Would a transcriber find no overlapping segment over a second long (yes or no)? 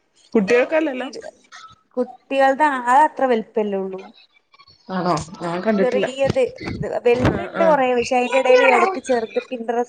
no